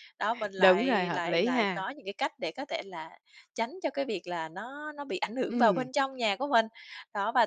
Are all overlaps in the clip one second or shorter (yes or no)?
no